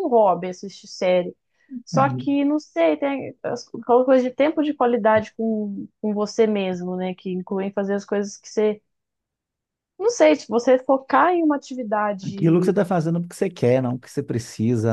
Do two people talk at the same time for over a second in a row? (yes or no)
no